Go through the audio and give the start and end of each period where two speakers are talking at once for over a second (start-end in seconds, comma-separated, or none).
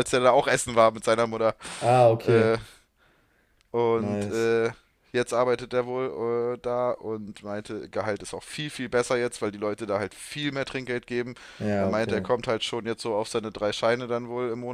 none